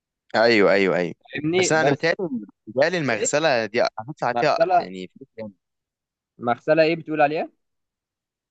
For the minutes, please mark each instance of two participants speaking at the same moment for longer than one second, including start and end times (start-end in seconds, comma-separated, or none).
none